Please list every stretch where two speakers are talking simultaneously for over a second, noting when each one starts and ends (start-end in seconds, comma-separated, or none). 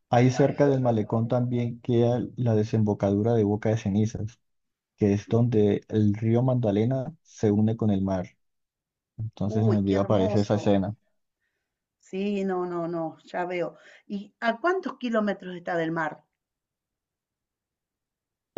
9.4-10.7